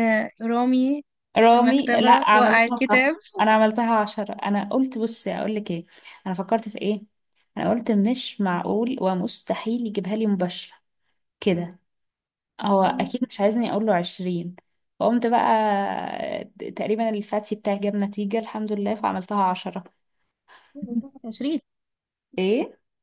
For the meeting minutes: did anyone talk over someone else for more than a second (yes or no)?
yes